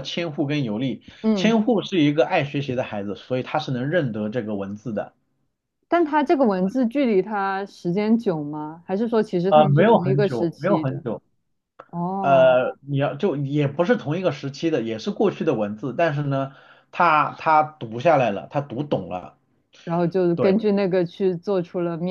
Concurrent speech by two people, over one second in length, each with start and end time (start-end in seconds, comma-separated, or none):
9.5-11.0